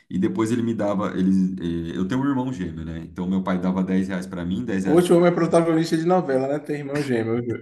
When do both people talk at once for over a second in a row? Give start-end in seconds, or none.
none